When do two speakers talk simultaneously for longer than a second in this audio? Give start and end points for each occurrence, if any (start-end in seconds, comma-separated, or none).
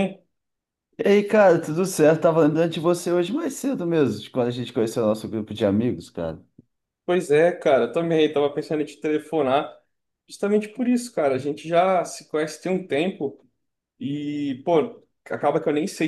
none